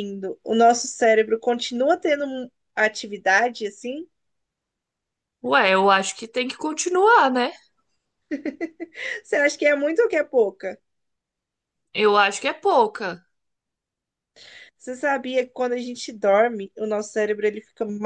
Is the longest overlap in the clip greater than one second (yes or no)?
no